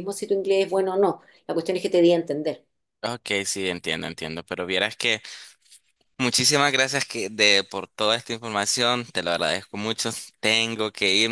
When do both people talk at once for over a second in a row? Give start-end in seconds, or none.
none